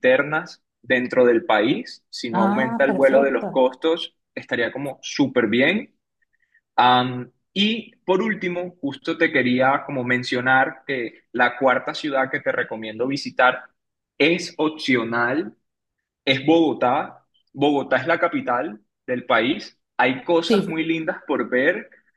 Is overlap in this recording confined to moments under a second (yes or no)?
no